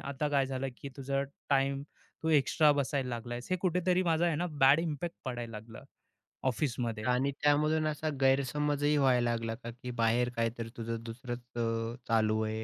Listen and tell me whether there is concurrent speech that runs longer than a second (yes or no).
no